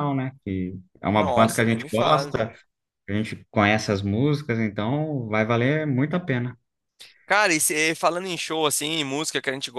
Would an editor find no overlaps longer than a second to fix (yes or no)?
no